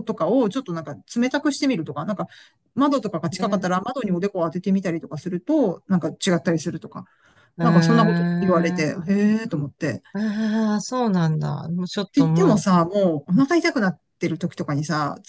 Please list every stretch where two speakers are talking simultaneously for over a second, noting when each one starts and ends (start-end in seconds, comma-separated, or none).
7.6-8.8